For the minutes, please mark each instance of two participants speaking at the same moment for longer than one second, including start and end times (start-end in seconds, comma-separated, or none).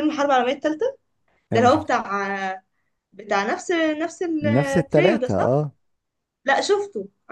4.4-5.6